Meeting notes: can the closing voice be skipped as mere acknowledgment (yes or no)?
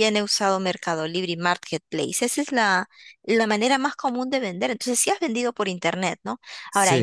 yes